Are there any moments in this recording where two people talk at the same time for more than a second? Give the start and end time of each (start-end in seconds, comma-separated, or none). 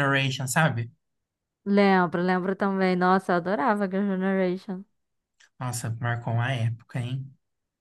none